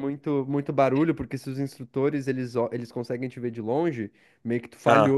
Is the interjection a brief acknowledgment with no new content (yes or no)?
yes